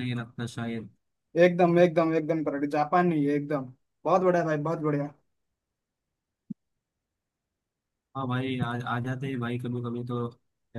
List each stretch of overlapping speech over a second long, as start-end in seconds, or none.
none